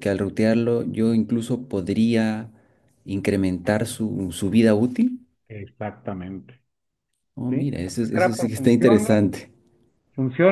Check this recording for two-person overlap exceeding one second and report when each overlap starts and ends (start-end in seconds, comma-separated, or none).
7.5-9.2